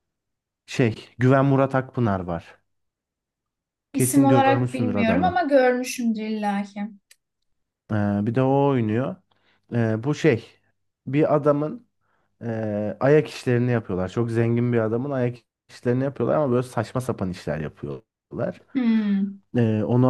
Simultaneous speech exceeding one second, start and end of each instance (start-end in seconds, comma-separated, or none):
3.9-5.5